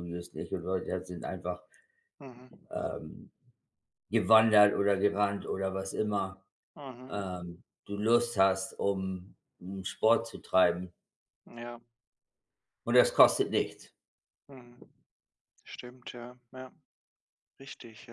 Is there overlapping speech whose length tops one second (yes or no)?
no